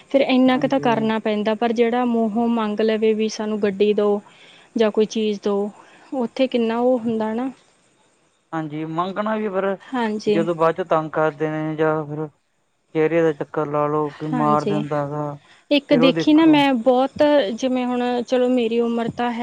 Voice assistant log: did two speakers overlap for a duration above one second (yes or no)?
no